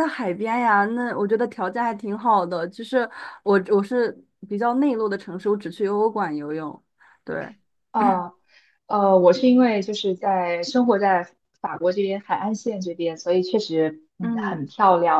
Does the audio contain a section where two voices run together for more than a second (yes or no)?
no